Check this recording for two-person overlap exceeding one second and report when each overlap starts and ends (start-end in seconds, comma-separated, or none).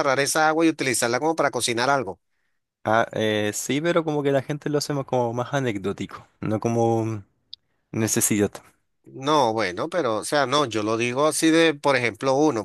none